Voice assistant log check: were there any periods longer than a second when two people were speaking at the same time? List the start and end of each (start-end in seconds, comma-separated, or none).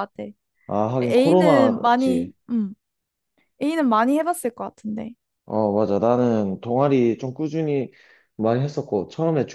1.0-2.3